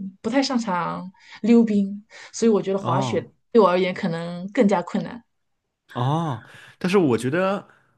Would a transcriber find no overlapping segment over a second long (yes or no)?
yes